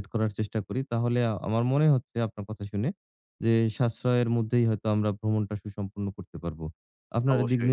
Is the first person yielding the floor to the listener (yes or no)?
no